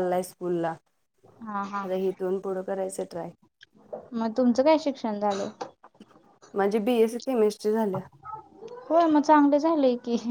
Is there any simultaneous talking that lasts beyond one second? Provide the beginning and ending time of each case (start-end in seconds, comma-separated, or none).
none